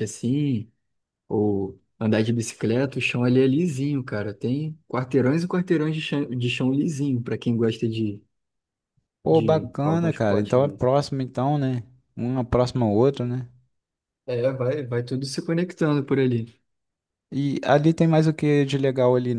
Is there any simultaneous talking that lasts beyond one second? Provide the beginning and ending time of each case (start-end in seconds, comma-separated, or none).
9.3-10.9